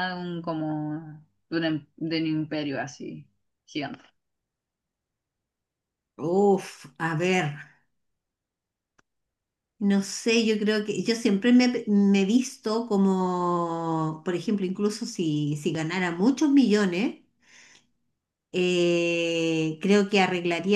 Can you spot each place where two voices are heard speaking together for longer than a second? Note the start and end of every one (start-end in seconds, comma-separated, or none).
none